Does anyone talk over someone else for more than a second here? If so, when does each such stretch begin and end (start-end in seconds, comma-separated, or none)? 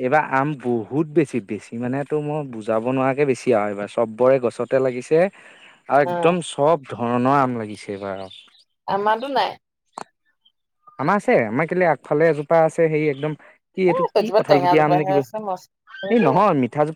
13.9-16.3